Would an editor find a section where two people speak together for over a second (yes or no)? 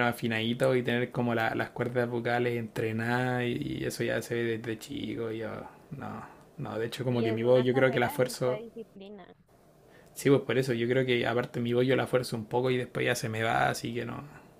yes